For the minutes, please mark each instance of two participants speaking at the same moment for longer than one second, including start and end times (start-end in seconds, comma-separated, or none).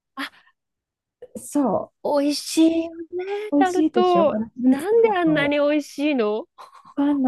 3.5-5.6